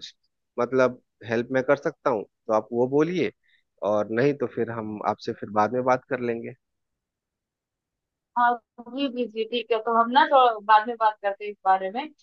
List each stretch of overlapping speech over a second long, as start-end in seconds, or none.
none